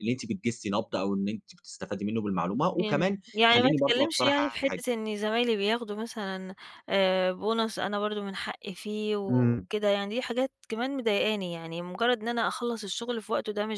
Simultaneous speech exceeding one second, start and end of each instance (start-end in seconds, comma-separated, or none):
2.8-4.8